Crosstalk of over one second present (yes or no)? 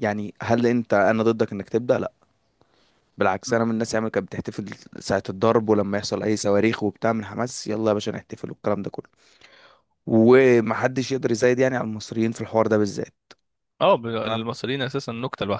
no